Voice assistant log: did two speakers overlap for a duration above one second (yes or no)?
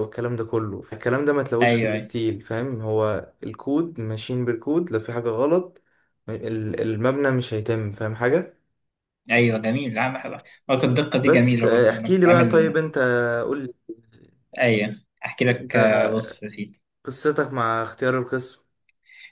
yes